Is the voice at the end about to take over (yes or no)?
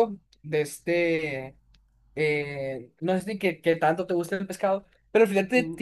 no